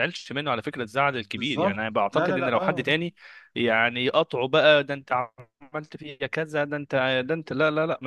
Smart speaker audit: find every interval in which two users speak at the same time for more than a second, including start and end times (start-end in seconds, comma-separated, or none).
1.4-2.9